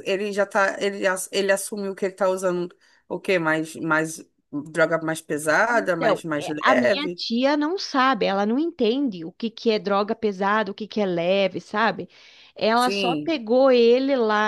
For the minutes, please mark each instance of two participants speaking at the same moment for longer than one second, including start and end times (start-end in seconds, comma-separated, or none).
5.7-7.2